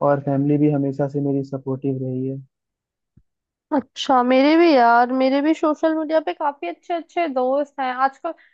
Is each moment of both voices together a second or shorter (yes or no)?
yes